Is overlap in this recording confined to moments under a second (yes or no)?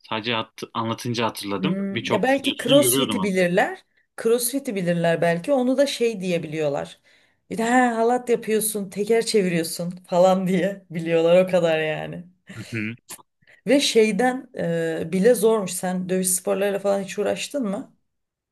no